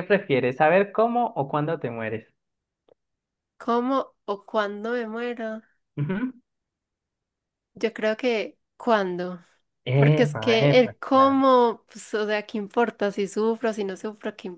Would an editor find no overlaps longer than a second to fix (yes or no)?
no